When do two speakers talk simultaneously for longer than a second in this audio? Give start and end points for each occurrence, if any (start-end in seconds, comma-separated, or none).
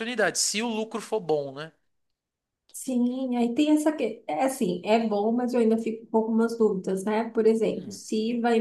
none